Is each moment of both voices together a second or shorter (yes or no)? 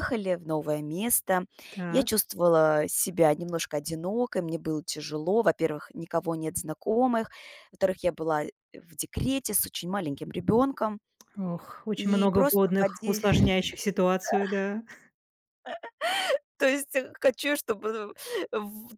no